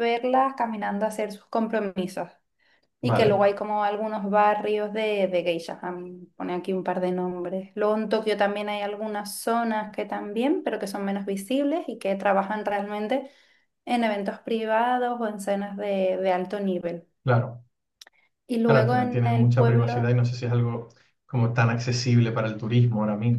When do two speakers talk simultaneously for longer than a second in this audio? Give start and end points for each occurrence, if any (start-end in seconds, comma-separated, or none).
18.6-20.1